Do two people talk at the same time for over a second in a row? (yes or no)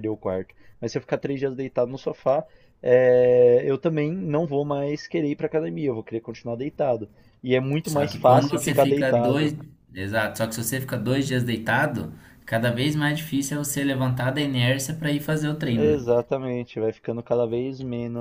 yes